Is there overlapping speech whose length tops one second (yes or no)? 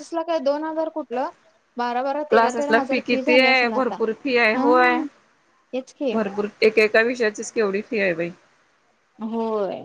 yes